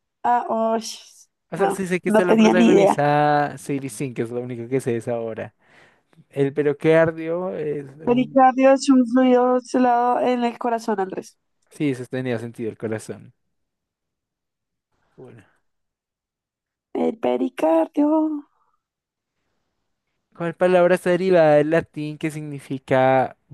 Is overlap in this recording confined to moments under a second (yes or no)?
no